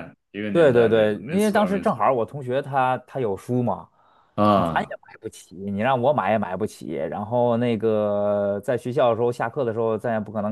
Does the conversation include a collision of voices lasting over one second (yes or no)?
yes